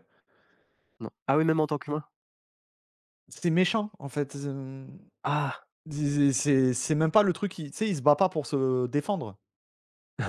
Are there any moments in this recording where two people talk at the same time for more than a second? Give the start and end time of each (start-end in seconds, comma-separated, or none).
none